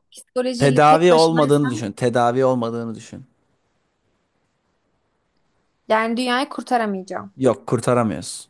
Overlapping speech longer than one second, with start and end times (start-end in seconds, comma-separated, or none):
0.6-1.8